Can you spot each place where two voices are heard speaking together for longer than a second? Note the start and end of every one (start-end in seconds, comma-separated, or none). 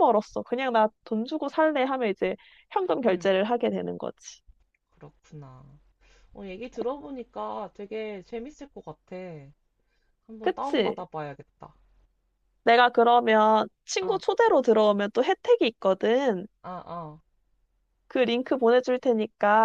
none